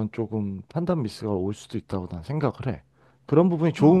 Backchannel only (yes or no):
yes